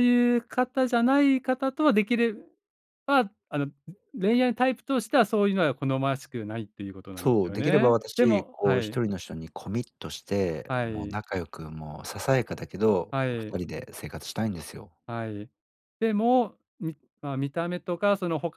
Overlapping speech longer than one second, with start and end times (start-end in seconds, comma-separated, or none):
7.2-9.0